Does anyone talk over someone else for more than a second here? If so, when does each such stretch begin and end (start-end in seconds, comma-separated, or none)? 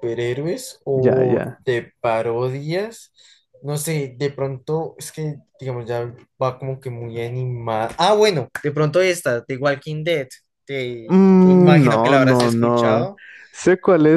11.1-13.1